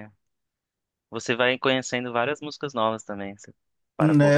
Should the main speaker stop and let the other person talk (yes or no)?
yes